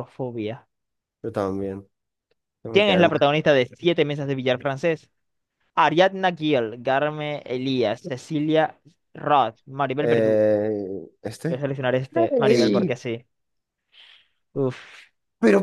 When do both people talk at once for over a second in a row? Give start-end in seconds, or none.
none